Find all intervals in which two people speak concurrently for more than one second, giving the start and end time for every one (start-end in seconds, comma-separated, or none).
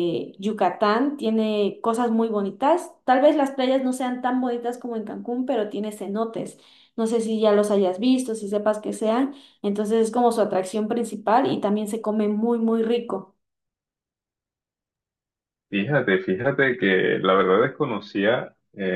none